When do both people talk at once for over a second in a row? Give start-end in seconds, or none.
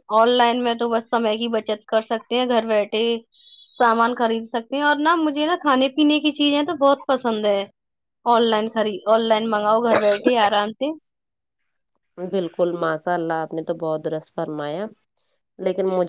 none